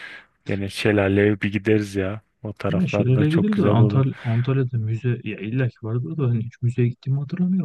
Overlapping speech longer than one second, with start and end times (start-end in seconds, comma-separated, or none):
2.7-4.0